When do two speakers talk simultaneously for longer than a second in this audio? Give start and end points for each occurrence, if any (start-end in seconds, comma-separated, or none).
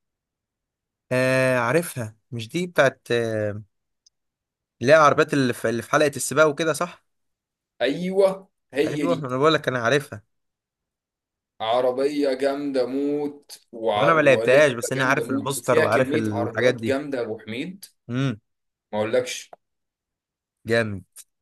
13.9-17.0